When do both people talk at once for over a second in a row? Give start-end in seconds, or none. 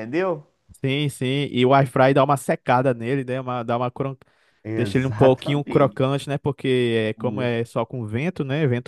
4.7-6.1